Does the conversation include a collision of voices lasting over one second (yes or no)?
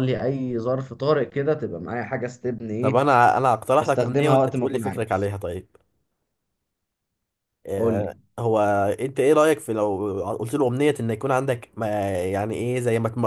yes